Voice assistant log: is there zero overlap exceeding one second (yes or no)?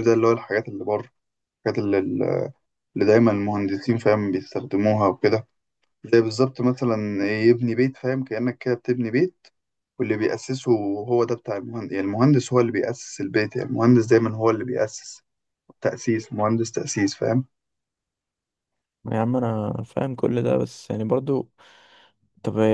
yes